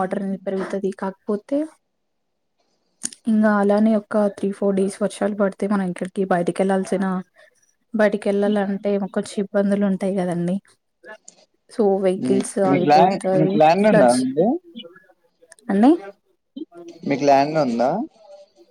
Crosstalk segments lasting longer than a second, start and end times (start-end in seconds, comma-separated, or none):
12.2-14.1